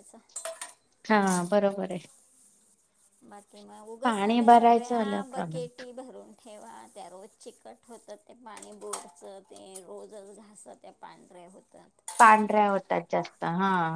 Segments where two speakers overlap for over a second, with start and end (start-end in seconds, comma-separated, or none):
4.0-5.7